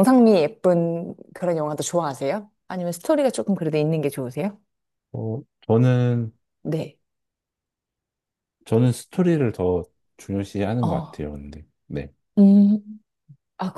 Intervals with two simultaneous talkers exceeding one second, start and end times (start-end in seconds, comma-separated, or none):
none